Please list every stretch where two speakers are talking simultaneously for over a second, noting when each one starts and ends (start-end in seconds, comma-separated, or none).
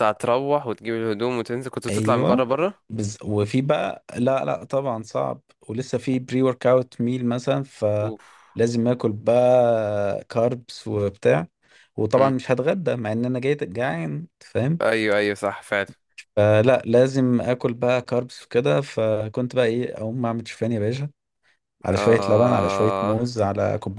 22.0-23.2